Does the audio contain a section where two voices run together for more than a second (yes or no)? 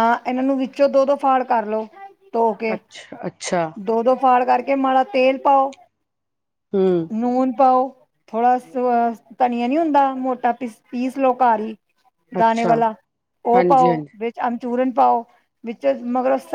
no